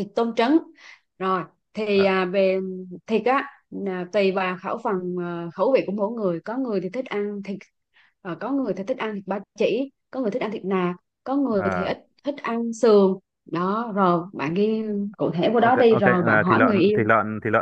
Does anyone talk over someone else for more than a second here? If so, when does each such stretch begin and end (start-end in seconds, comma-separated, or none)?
15.5-17.1